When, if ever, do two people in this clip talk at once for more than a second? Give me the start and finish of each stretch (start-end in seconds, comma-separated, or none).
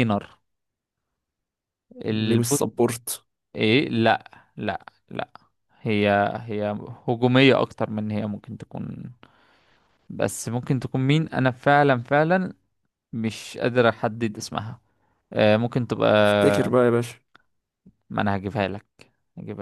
none